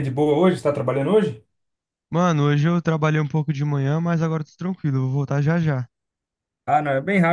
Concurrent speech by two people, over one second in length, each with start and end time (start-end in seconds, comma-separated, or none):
none